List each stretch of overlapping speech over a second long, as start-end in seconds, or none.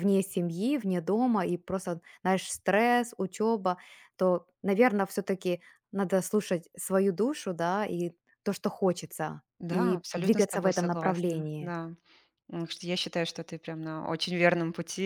9.6-11.7